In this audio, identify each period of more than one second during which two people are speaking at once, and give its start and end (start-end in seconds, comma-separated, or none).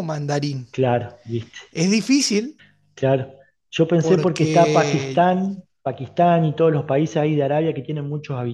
4.0-5.3